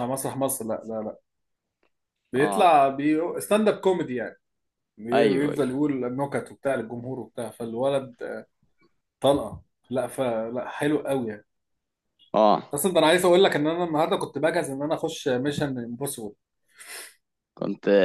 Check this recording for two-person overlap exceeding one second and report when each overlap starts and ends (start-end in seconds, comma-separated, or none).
none